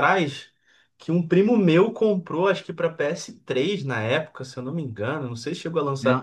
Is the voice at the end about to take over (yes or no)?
yes